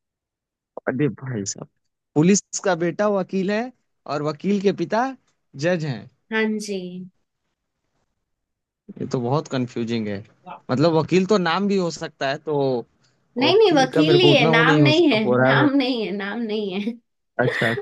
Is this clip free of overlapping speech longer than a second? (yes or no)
no